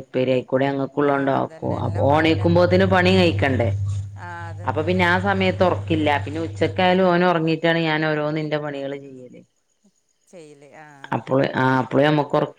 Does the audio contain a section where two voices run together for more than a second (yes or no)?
yes